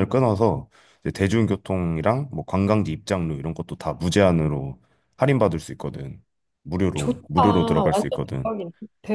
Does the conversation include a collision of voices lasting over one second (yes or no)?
yes